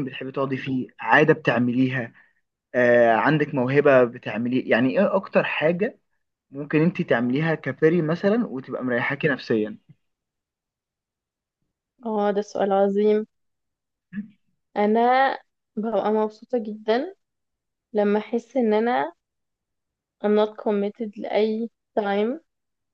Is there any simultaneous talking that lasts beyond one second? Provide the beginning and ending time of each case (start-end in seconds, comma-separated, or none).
none